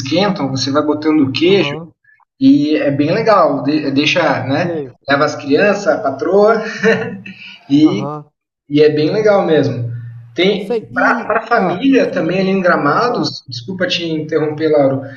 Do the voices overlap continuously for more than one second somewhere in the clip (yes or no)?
yes